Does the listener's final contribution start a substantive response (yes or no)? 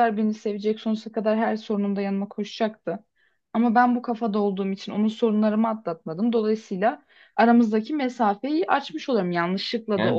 yes